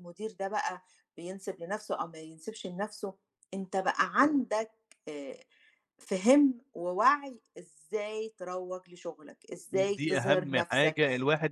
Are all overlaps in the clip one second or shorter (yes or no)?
no